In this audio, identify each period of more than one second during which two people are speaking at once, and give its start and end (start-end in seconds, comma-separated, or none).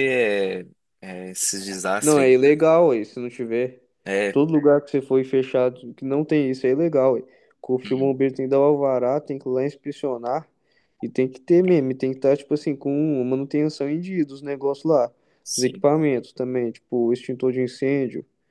none